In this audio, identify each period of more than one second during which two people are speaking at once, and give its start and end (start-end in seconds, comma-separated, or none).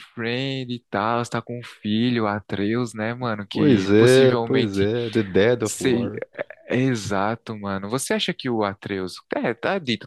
3.5-4.9